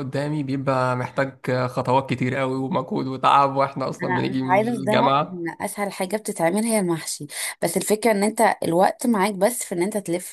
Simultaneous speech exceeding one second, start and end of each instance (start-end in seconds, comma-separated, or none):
4.0-5.5